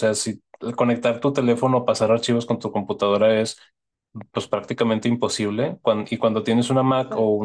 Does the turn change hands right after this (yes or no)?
no